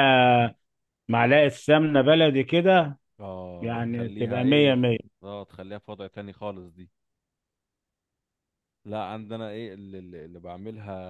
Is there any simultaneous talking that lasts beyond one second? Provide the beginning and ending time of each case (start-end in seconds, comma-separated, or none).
3.6-4.8